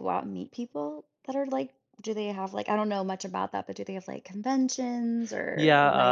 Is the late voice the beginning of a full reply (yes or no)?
yes